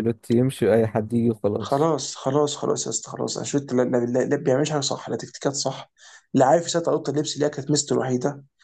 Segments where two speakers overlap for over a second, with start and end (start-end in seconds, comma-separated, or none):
none